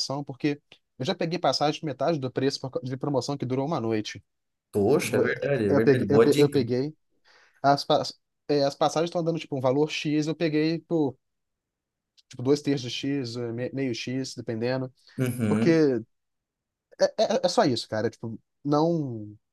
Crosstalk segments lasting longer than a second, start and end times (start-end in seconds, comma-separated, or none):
5.0-6.6